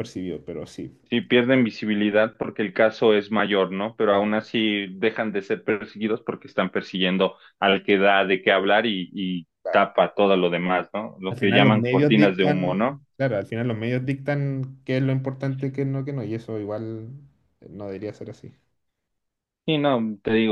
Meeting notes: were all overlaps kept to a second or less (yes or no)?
no